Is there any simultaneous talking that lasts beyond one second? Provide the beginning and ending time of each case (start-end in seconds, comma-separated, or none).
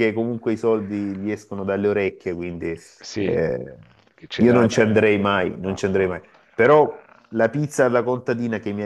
4.3-6.3